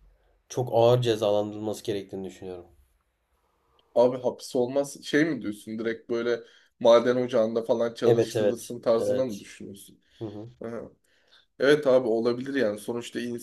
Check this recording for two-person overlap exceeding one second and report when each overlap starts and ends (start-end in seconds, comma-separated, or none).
8.1-9.4